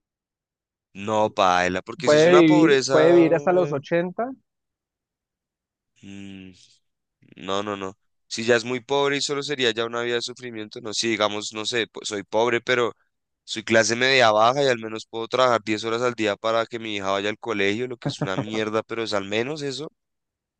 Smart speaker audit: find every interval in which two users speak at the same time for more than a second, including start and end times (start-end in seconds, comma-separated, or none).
2.0-3.8